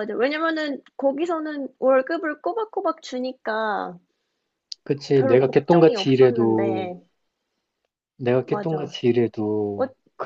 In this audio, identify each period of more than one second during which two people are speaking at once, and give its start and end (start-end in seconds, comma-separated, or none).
5.1-6.9